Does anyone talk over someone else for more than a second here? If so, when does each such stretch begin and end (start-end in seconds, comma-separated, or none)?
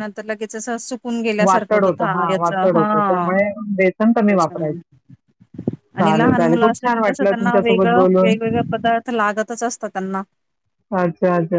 1.4-3.3, 6.0-8.3